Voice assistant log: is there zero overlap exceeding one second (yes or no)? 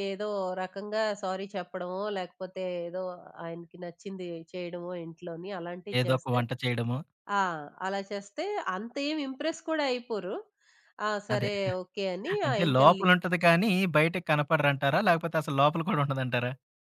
yes